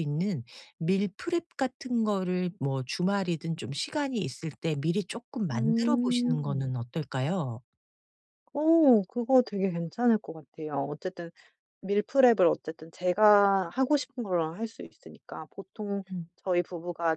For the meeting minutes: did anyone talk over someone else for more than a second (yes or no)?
yes